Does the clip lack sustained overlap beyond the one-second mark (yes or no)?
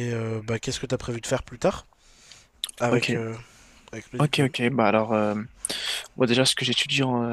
yes